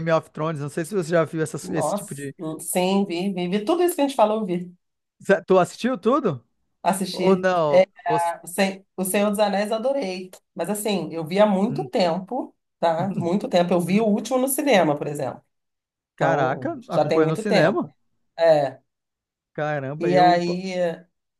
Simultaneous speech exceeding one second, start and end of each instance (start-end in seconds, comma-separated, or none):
16.1-17.9